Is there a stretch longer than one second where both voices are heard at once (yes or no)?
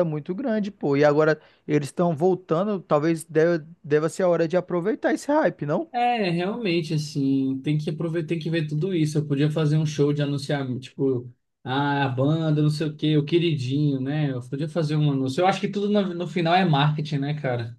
no